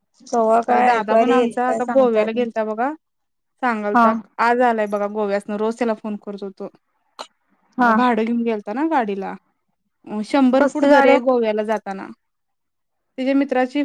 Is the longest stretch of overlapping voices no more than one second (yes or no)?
no